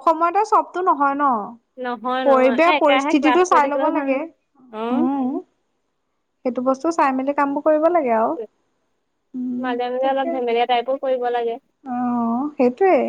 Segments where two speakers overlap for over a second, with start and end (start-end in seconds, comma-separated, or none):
2.3-4.1